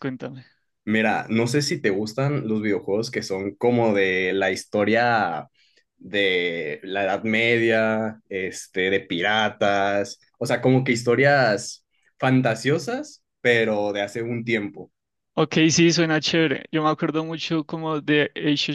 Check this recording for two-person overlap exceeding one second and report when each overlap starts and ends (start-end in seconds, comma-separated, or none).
none